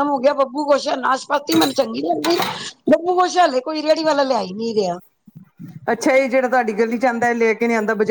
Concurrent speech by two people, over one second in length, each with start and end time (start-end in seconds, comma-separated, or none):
none